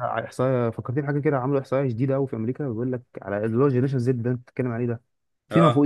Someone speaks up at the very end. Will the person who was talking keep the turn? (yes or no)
yes